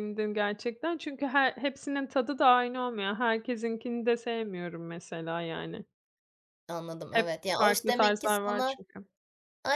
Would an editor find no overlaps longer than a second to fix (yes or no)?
no